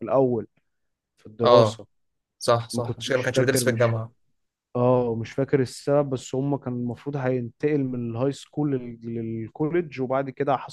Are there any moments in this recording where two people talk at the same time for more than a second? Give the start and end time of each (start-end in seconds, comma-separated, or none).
2.7-4.0